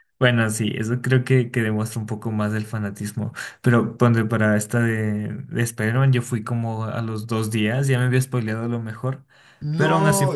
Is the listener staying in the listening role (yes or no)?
yes